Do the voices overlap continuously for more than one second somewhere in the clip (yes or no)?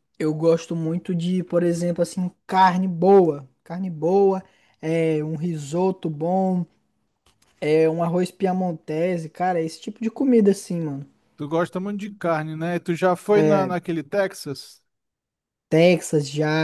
no